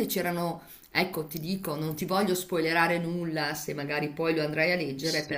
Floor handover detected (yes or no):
yes